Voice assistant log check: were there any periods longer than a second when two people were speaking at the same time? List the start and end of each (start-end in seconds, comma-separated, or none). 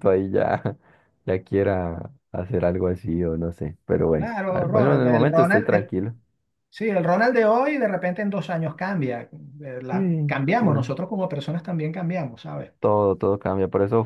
4.2-5.9